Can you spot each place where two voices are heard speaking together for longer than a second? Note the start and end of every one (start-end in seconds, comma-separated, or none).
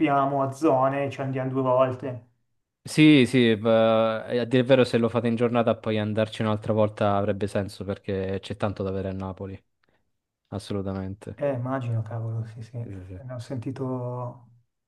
none